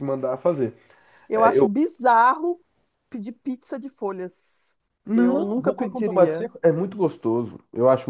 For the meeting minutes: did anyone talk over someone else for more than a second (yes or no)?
yes